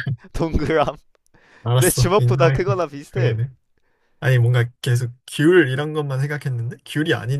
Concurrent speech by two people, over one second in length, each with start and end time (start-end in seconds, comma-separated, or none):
1.7-3.4